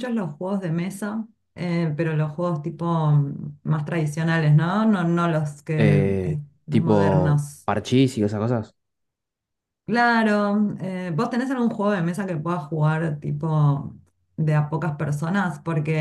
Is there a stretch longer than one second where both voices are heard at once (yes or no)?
yes